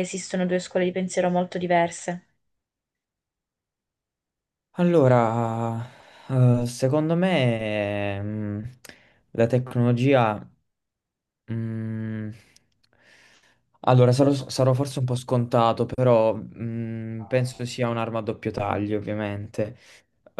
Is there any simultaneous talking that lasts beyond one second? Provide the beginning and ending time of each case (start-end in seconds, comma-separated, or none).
none